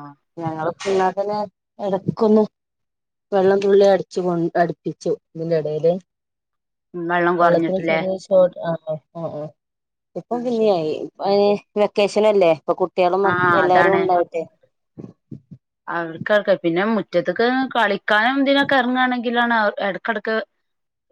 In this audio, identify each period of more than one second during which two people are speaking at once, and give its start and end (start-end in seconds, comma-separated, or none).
none